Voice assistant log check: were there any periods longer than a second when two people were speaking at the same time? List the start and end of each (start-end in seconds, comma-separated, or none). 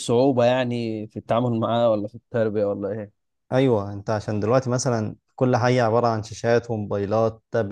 none